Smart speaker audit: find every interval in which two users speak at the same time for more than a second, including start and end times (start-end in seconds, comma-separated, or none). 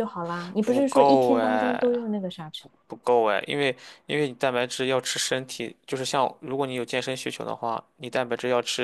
0.6-2.0